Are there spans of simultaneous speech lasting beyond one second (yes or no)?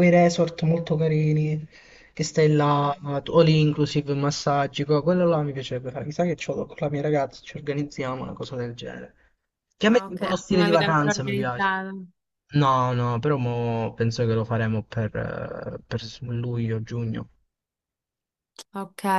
yes